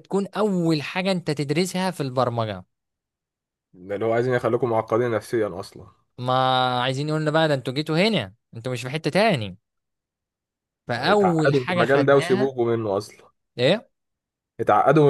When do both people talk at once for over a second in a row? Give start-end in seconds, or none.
11.0-12.5